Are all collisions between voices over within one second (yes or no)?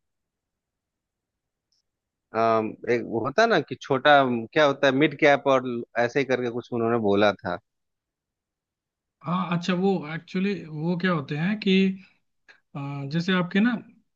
yes